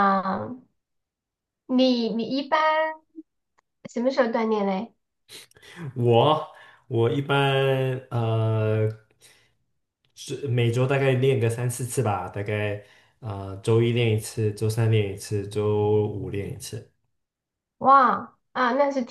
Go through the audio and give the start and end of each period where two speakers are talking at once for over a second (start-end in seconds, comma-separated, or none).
none